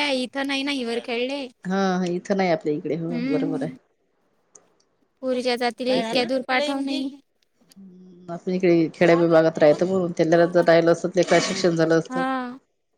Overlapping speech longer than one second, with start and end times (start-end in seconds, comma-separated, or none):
none